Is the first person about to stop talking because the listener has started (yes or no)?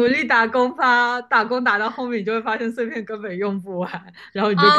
yes